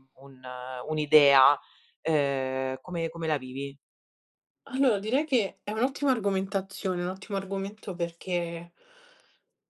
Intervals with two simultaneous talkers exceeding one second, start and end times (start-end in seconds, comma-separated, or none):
none